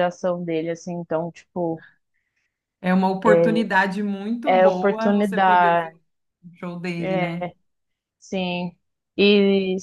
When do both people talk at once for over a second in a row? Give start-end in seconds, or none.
4.4-5.9